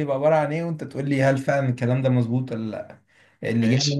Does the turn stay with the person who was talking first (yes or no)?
yes